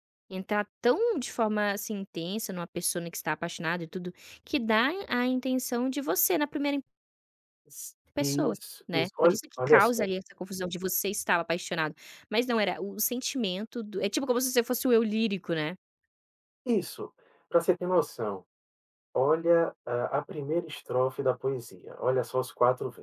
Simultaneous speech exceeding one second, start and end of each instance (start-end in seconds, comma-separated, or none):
8.1-10.1